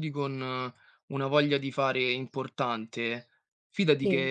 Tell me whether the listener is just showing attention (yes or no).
yes